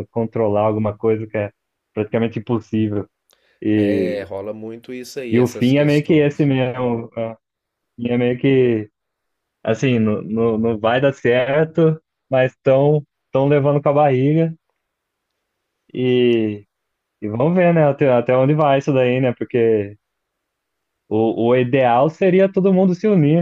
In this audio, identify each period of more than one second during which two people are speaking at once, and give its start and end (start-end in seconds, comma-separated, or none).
5.3-6.5